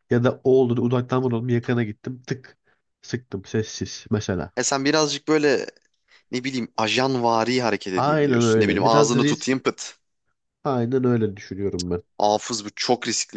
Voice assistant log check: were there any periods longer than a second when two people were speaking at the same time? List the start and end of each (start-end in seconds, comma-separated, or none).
7.9-9.6